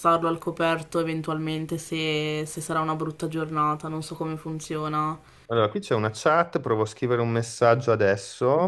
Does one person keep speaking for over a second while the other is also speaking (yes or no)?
no